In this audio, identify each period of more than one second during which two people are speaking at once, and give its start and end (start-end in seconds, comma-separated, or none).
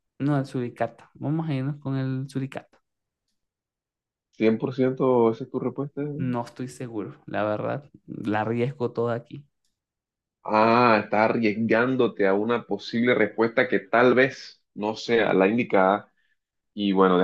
none